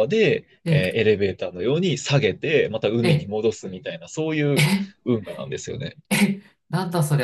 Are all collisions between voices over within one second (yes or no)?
yes